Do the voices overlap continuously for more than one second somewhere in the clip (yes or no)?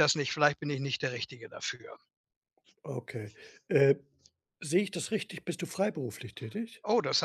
no